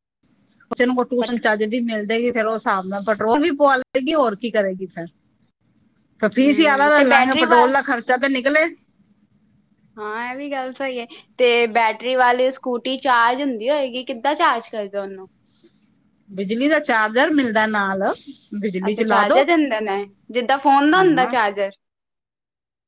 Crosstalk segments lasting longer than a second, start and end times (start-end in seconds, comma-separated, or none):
6.2-7.7